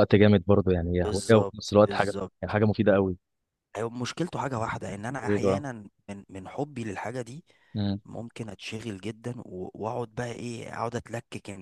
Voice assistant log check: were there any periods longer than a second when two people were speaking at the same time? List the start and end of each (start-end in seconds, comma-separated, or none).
1.0-2.5